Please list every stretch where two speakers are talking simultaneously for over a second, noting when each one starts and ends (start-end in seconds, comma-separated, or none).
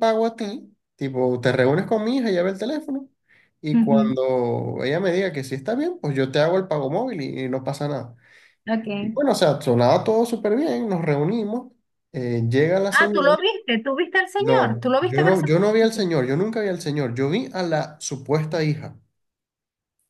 14.4-16.1